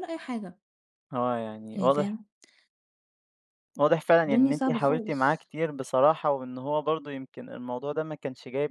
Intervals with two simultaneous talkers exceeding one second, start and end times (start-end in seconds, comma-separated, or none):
4.2-5.5